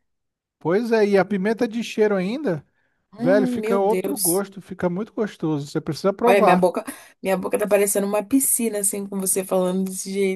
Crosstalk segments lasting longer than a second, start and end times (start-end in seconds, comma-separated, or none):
3.2-4.4